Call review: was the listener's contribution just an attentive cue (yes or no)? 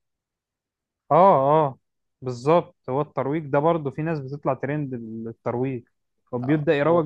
yes